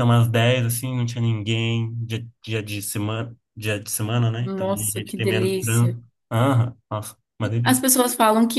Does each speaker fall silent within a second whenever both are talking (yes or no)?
no